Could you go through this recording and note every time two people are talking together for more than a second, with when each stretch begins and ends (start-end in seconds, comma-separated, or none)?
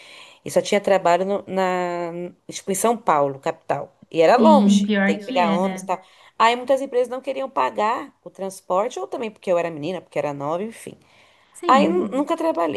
4.4-5.9